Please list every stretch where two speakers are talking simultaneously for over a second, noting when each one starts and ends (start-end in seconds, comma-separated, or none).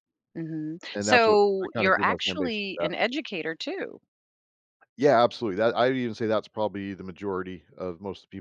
0.9-2.9